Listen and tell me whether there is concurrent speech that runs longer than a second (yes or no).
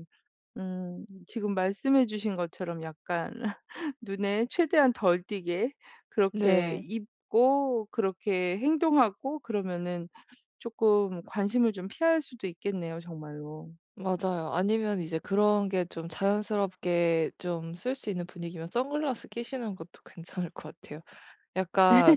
no